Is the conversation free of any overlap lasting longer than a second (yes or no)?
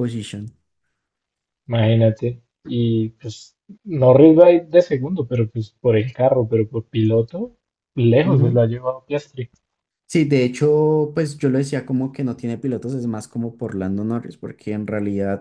yes